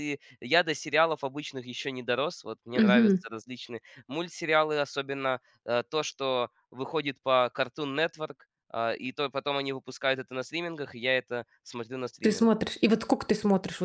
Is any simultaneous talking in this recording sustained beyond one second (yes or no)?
no